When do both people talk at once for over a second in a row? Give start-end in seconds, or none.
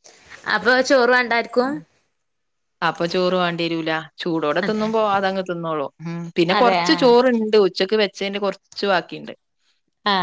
none